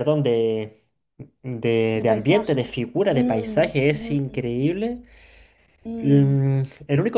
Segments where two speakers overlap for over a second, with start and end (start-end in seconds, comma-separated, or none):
1.9-4.2